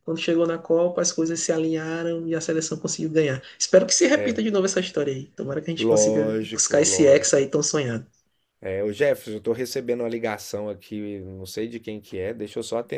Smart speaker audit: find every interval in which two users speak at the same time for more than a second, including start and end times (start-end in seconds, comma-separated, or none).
5.8-7.5